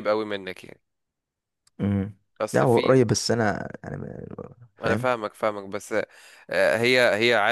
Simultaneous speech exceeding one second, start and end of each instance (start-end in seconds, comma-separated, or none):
none